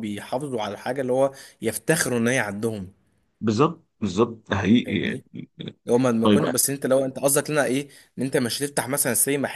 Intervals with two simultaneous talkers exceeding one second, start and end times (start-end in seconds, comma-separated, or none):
none